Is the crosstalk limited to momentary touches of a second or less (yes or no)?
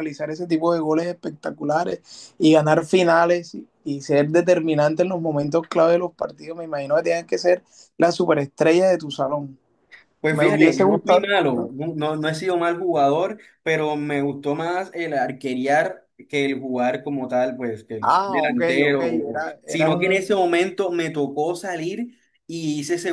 no